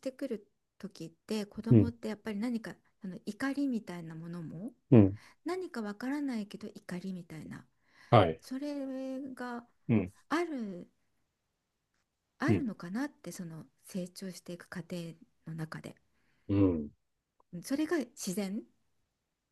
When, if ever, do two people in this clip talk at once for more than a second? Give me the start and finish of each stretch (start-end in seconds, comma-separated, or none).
none